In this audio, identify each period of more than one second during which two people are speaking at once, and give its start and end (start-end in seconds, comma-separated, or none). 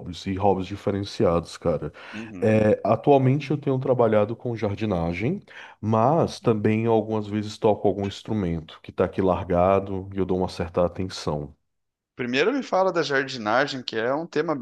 none